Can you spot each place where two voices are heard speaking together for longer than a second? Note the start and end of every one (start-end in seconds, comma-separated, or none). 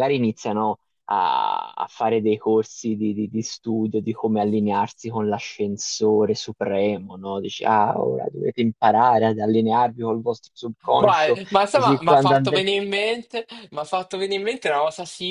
11.0-12.7